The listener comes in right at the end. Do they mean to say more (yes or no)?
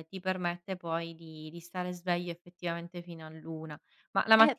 yes